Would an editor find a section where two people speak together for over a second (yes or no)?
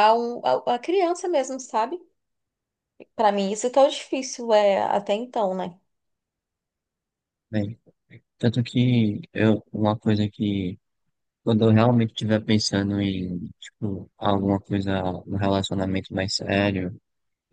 no